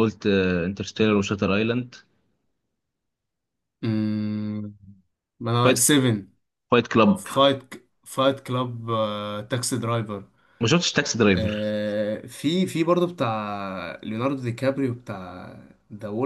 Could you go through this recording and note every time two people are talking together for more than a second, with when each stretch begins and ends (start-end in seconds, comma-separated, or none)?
none